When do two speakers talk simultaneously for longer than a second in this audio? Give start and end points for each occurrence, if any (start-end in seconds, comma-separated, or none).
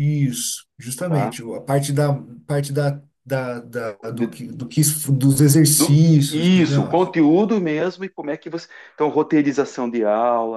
5.8-7.1